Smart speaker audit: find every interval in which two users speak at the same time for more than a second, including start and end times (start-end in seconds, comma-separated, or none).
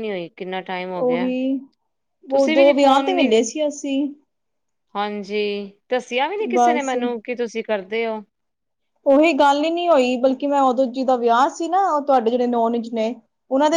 none